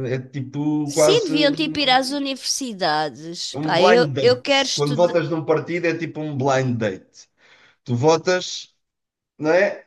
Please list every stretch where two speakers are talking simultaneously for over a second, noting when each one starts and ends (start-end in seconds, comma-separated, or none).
0.8-2.2, 3.5-5.2